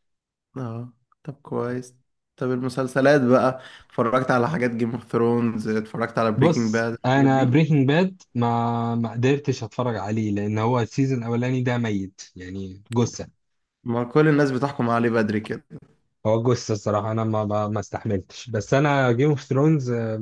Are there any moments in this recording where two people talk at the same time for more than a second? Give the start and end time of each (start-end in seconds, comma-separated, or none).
6.4-7.6